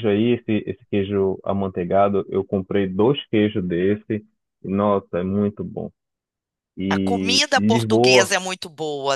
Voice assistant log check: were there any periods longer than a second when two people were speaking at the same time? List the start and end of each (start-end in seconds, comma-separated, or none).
6.9-8.3